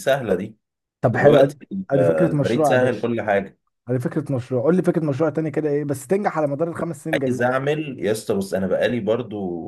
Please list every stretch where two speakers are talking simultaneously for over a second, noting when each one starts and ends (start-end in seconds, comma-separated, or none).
1.1-3.1